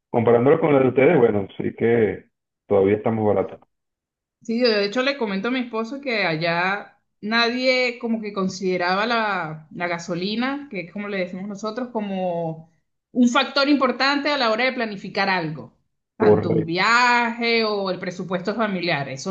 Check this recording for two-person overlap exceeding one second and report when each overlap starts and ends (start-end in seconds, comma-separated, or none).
none